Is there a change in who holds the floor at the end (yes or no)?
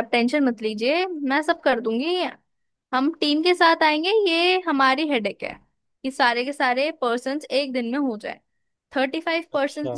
no